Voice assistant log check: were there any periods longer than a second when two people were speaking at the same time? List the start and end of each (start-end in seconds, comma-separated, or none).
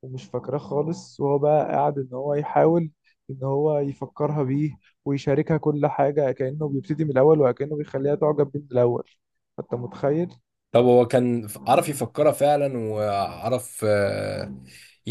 none